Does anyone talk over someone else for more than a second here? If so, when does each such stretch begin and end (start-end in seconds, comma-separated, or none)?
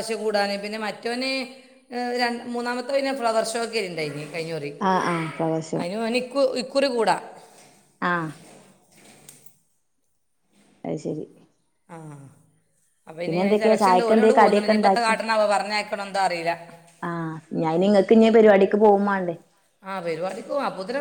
13.4-15.2